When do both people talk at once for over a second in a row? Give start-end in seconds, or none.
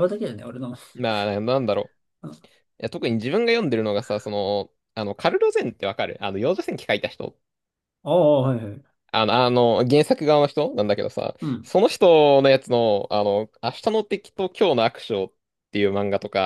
none